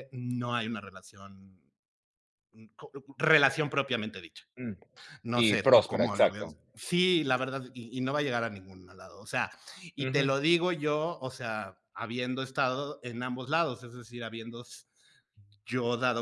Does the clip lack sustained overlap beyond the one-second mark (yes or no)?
no